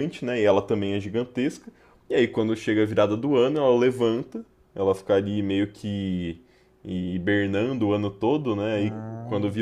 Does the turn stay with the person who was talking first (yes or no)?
yes